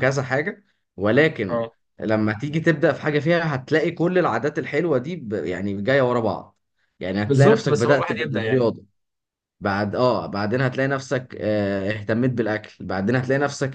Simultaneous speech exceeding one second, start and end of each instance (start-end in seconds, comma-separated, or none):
7.3-8.7